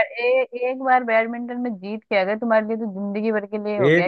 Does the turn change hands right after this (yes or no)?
yes